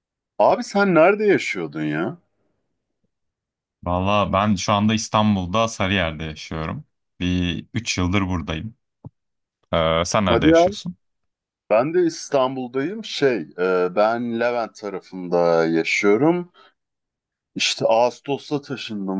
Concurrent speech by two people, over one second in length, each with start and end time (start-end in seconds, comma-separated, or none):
none